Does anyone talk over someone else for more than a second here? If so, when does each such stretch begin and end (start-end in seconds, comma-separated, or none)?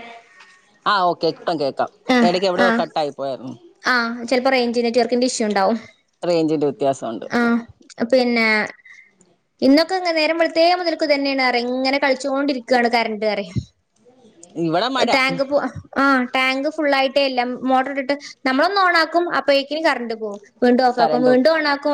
none